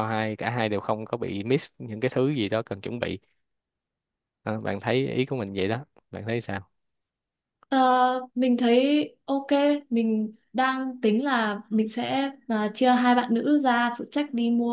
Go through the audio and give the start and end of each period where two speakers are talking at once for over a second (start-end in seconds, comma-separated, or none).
none